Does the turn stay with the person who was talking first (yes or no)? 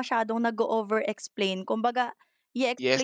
no